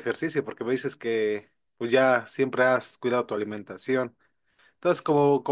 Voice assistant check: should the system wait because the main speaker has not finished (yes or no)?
yes